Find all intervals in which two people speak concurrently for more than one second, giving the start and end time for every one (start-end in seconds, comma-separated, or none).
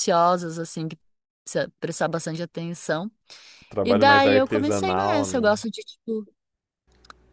3.8-5.6